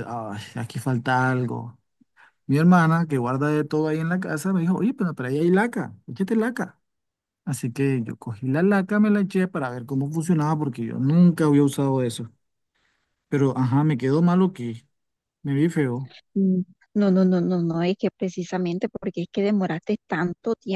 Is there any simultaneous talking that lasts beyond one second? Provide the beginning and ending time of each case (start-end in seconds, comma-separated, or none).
none